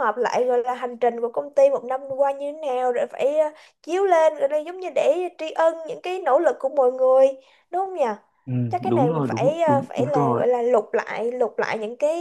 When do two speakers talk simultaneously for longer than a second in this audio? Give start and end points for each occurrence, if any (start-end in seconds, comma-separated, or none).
8.9-10.4